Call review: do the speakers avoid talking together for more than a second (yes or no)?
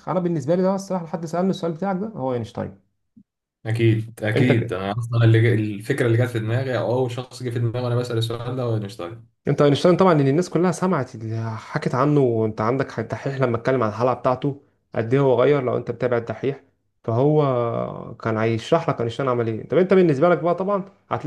yes